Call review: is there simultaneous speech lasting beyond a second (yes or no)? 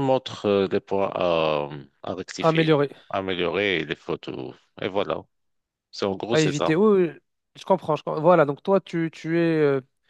no